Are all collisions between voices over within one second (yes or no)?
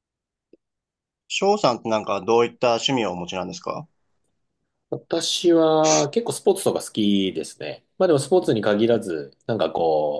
yes